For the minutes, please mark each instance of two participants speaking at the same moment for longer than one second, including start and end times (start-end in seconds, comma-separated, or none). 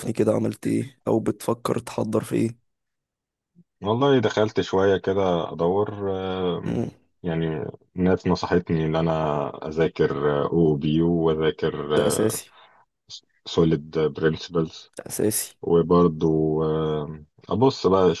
none